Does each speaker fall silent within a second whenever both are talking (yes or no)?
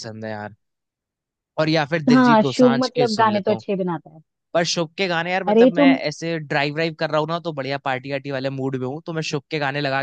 no